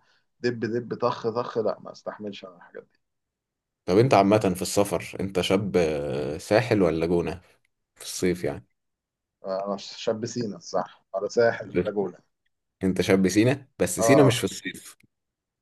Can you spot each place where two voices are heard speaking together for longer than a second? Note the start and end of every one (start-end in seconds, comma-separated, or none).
none